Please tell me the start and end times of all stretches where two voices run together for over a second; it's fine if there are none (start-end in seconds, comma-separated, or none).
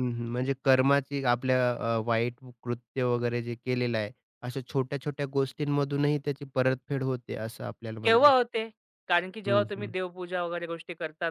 none